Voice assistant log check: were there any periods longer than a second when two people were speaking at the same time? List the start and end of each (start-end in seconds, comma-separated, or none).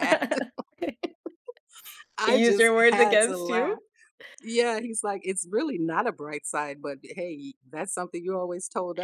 2.2-3.8